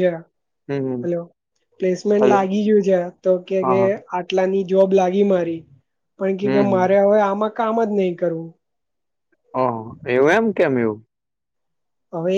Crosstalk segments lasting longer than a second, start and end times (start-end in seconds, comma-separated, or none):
none